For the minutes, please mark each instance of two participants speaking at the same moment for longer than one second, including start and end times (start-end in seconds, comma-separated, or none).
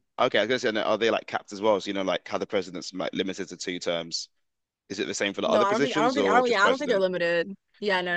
5.5-7.0